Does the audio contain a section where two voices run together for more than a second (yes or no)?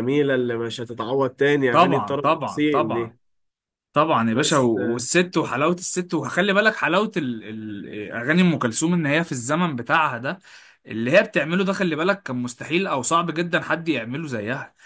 yes